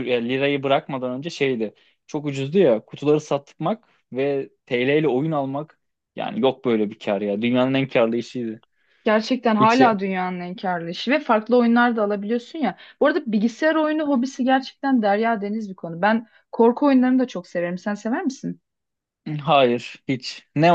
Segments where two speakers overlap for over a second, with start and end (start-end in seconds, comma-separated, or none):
none